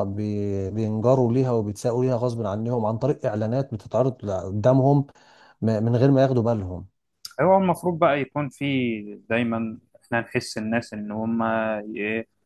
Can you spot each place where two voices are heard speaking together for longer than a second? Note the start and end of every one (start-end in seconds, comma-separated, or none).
none